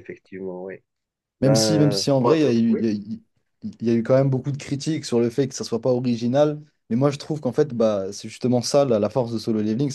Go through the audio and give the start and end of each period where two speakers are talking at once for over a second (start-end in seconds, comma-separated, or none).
1.4-2.8